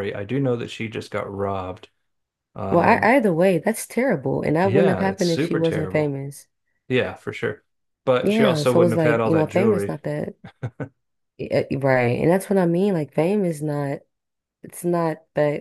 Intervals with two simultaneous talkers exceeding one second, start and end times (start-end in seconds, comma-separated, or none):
4.6-6.1, 8.2-10.0